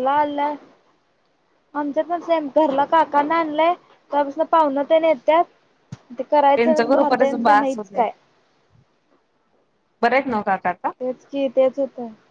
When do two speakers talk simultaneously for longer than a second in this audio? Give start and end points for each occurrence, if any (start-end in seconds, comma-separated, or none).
6.4-8.0